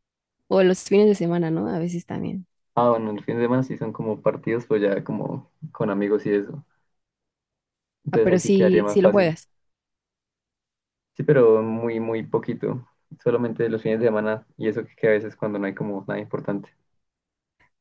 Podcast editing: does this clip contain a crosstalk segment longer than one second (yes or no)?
yes